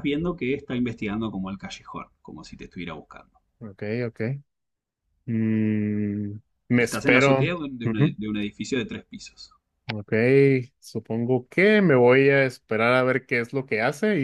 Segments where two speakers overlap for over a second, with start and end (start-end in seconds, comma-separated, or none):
6.8-8.2